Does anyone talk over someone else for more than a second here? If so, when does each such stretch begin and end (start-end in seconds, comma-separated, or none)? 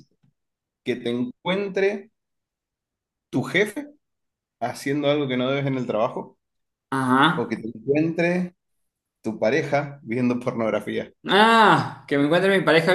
none